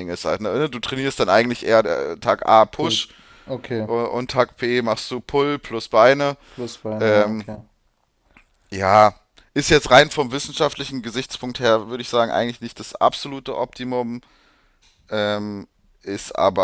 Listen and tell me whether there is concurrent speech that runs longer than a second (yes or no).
no